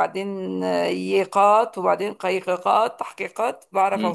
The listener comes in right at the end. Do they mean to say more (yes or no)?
yes